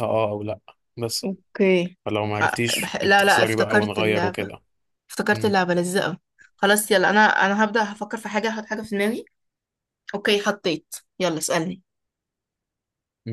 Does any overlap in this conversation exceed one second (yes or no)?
yes